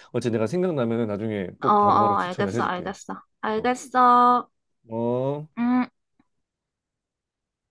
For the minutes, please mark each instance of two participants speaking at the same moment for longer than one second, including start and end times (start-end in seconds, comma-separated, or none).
1.6-2.9